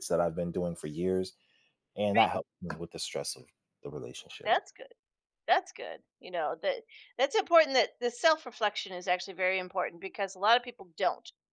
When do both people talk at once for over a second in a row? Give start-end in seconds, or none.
none